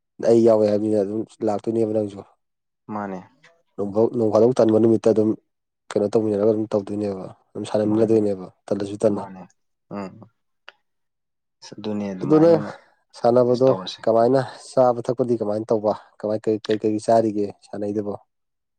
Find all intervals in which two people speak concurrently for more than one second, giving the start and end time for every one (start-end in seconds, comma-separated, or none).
none